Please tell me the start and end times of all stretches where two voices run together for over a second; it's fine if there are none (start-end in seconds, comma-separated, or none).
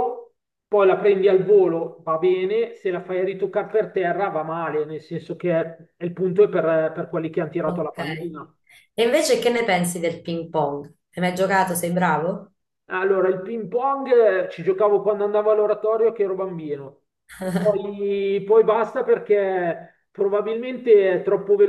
none